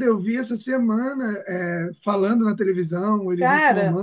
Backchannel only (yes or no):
no